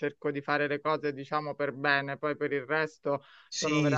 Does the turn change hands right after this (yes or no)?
no